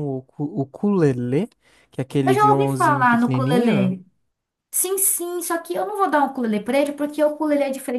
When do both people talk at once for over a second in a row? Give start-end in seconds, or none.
2.2-4.0